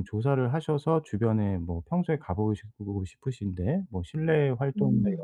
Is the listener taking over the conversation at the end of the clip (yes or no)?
no